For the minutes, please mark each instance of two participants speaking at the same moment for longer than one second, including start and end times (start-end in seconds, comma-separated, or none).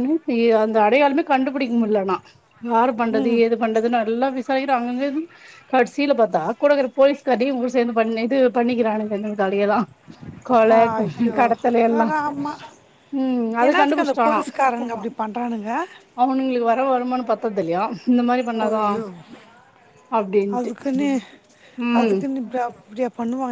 none